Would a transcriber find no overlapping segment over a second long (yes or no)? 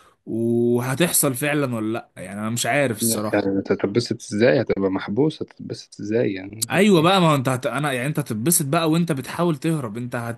yes